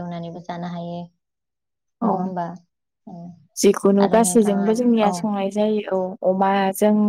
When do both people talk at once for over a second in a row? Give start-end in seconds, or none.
none